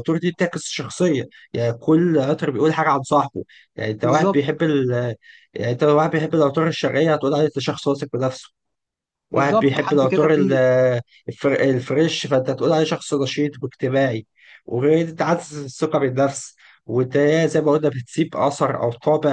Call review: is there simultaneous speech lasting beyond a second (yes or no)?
yes